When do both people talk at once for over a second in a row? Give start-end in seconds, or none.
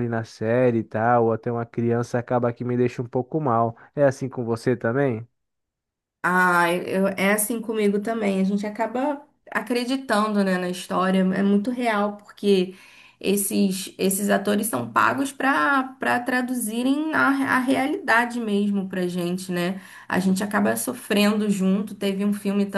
none